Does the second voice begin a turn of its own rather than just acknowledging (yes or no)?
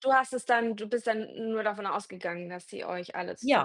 yes